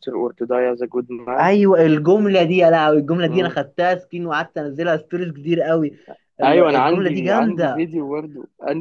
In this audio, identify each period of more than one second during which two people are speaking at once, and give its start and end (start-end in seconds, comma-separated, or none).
6.4-7.9